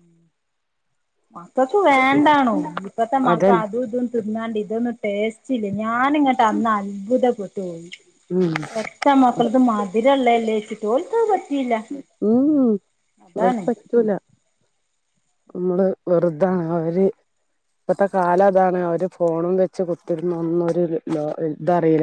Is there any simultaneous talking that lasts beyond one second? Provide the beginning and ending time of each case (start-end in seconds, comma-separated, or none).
none